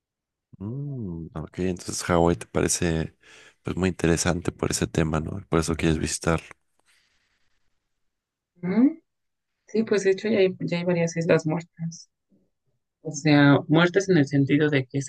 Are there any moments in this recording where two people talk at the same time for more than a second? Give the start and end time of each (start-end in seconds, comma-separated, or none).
none